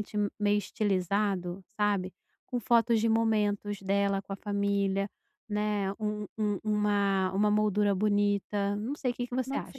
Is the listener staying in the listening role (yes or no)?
no